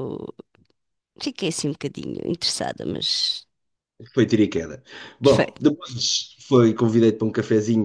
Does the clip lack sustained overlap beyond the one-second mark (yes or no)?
yes